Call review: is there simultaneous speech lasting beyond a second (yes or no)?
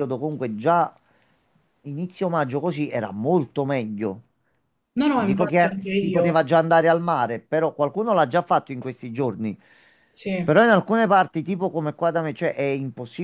yes